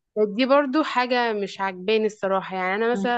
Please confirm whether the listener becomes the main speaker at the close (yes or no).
yes